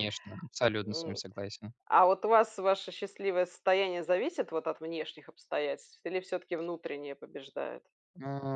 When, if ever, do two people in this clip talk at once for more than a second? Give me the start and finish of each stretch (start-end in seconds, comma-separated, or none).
none